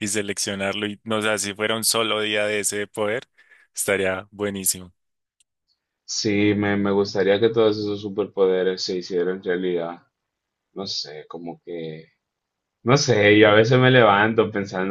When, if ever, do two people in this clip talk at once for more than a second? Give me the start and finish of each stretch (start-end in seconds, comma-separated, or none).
none